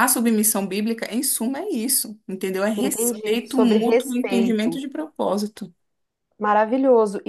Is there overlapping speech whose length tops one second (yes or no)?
yes